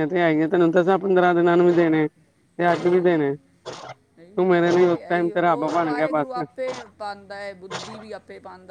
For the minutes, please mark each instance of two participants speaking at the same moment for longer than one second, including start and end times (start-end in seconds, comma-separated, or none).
4.5-6.4